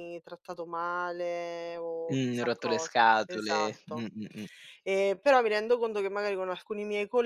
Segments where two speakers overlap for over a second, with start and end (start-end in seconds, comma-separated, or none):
2.1-4.1